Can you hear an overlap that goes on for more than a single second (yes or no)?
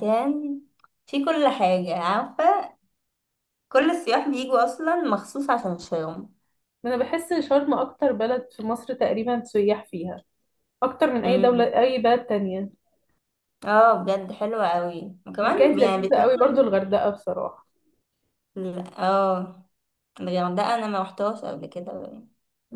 yes